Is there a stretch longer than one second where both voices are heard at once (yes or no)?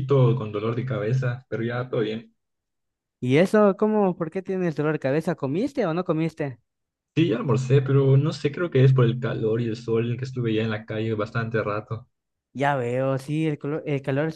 no